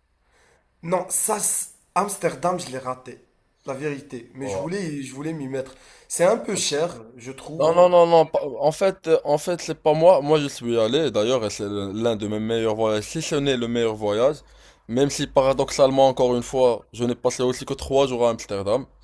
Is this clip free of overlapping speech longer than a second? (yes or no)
yes